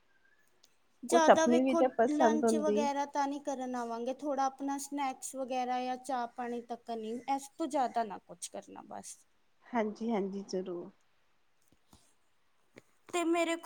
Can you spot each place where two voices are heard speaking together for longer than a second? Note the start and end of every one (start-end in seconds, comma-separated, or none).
1.1-2.8